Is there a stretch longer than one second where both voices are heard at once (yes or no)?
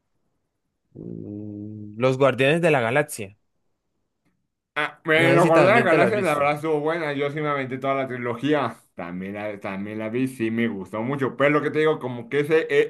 yes